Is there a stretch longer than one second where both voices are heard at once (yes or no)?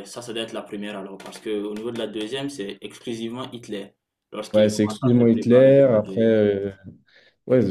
yes